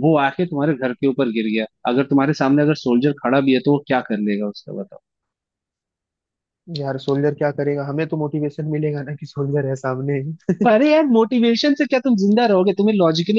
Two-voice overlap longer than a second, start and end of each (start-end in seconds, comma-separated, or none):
none